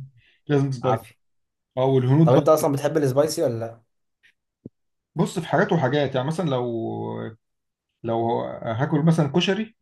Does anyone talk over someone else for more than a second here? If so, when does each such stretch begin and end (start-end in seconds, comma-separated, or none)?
none